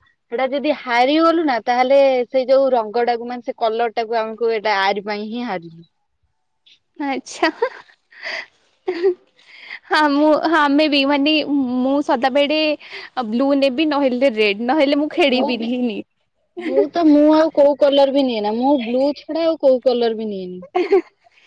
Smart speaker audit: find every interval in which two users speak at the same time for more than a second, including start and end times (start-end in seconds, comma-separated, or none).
none